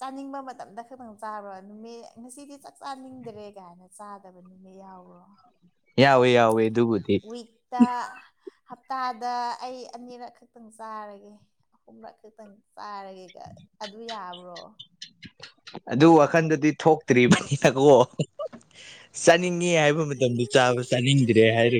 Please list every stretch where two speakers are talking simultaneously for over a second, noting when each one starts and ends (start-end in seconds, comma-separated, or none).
none